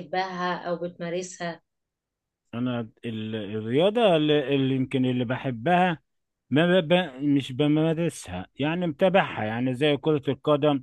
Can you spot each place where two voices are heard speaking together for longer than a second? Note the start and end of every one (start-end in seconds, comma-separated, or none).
none